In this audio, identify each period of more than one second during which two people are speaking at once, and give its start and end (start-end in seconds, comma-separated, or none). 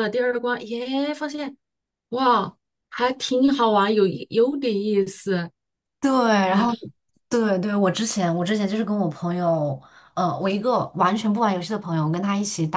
none